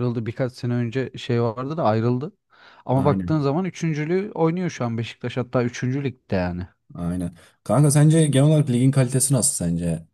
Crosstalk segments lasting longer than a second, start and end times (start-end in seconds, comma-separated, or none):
none